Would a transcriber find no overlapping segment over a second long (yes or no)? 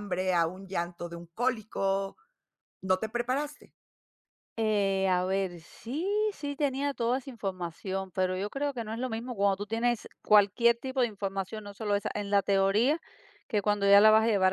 yes